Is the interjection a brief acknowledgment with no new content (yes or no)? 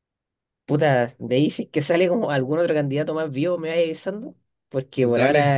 yes